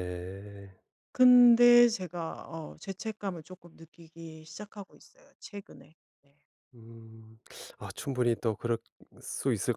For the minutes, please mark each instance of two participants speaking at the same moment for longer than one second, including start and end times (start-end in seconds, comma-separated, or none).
none